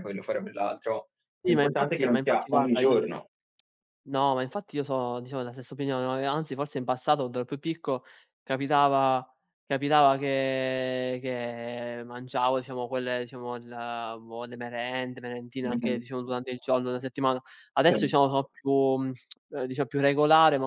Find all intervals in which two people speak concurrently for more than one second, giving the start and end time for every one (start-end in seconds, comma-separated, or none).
1.4-3.0